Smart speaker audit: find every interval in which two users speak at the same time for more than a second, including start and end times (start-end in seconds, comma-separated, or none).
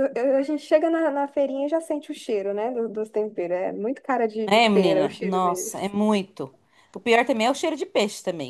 4.4-5.9